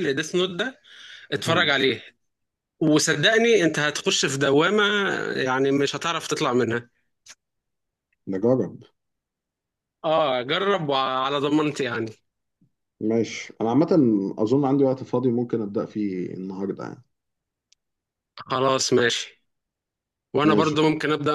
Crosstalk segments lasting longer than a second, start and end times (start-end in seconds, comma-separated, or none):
none